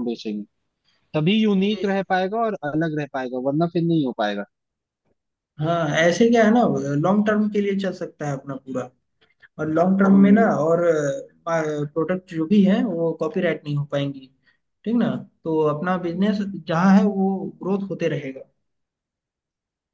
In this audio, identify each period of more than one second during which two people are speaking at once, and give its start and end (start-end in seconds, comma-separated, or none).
none